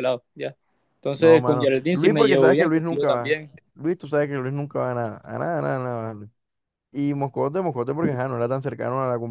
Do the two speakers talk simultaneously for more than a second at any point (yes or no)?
yes